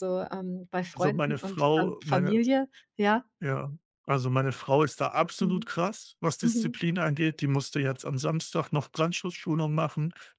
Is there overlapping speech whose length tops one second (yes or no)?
yes